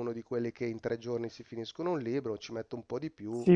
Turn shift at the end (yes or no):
yes